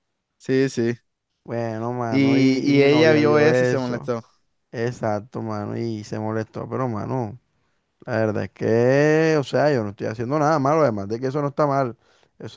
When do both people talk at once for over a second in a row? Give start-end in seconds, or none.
2.1-4.1